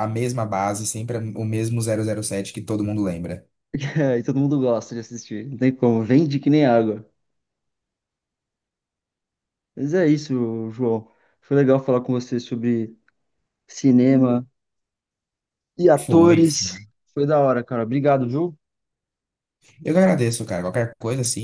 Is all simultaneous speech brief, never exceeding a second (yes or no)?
yes